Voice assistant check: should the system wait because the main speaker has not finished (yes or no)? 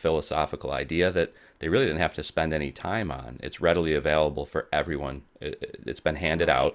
yes